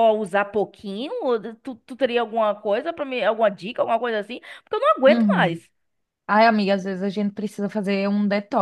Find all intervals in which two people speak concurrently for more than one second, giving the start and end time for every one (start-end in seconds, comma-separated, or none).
none